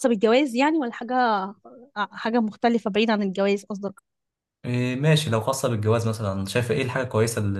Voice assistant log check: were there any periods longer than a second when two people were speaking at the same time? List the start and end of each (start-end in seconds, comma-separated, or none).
none